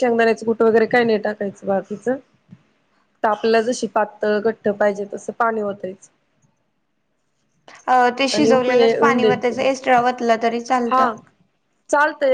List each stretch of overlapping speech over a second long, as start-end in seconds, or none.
none